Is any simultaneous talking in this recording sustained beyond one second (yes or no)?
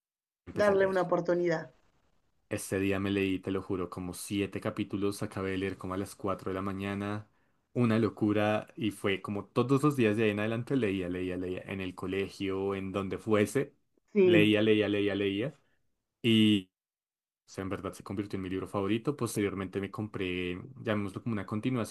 no